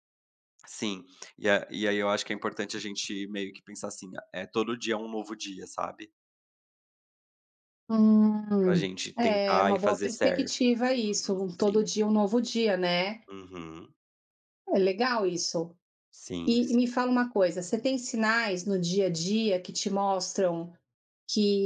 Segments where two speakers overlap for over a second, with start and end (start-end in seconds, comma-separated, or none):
8.6-11.9